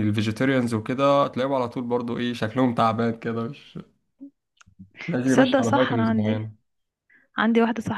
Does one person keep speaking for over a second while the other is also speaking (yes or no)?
yes